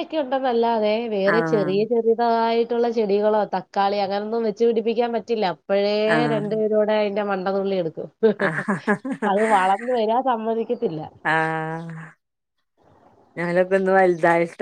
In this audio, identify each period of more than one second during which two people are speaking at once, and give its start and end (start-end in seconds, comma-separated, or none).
none